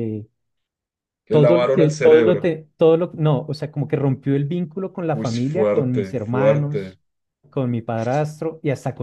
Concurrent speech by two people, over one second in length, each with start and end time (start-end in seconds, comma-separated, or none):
1.3-2.5, 5.1-7.0